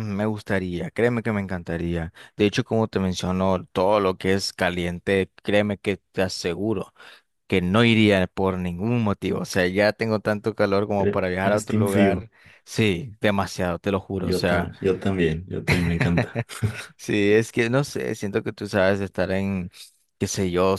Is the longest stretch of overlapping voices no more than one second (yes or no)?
no